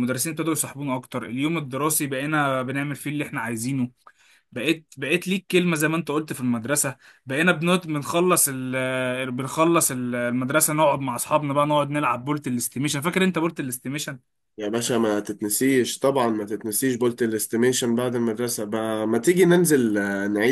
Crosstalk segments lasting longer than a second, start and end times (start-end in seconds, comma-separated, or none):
none